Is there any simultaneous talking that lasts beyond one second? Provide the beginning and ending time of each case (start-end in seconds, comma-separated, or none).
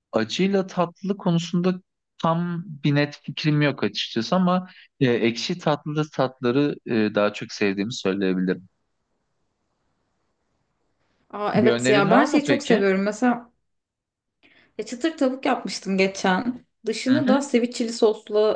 11.5-12.8